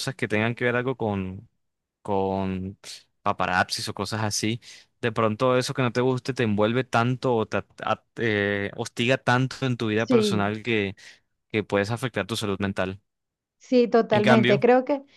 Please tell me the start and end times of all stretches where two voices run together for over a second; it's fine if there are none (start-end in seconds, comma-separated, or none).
none